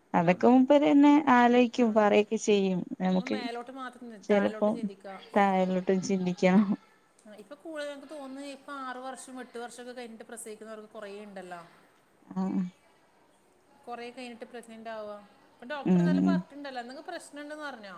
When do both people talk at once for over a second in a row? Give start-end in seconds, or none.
none